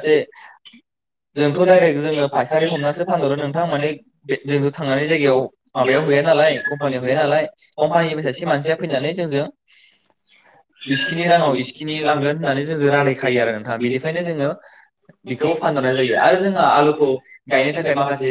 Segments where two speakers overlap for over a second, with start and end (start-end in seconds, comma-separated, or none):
10.9-14.2